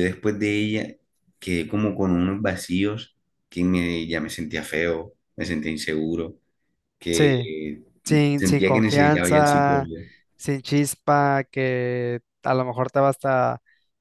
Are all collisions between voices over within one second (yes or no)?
no